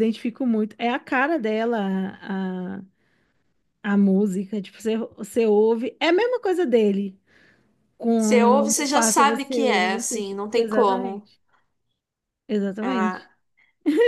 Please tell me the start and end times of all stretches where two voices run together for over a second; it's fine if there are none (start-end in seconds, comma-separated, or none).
8.2-11.3